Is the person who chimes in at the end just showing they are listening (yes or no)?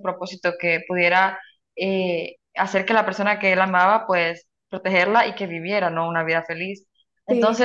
yes